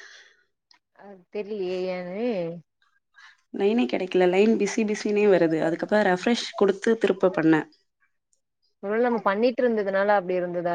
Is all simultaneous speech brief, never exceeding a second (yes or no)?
yes